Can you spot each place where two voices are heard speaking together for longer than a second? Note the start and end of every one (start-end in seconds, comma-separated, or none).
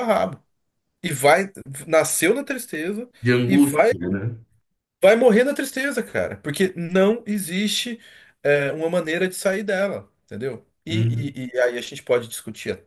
none